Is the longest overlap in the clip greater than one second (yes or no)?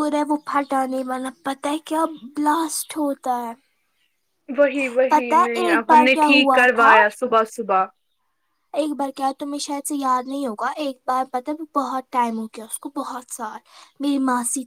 yes